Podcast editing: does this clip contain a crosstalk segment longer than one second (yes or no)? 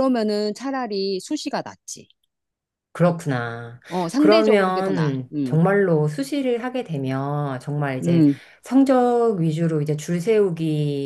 yes